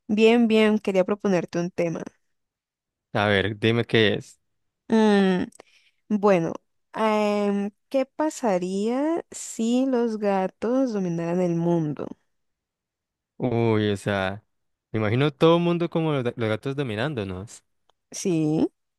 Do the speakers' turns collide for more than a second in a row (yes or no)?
no